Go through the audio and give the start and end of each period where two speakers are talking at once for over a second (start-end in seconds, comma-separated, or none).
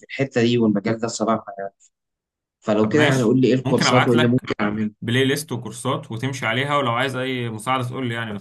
2.8-4.4